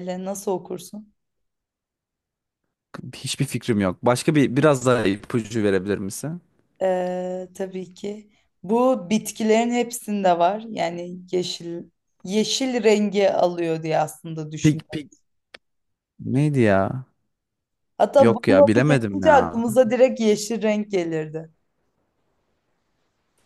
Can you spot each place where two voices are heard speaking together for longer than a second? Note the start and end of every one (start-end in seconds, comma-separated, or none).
18.2-19.6